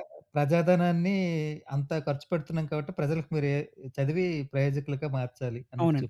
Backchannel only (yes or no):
no